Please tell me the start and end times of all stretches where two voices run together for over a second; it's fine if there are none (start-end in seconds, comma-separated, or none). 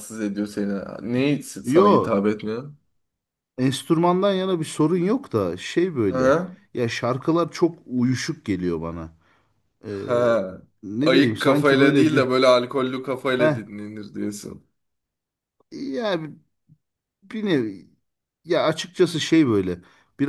11.1-12.2